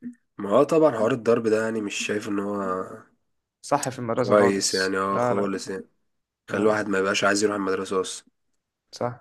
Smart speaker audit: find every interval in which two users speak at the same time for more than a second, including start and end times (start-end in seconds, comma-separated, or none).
4.2-5.5